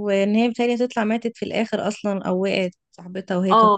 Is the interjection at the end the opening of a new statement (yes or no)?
yes